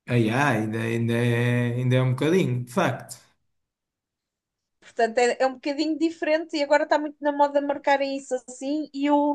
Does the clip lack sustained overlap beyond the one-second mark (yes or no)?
yes